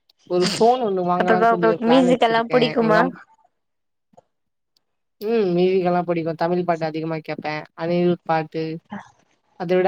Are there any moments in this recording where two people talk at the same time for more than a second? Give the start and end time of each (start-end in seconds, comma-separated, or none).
1.2-3.0